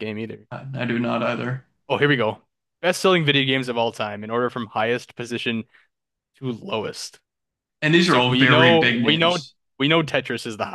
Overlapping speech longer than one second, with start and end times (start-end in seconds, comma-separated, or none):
8.1-9.4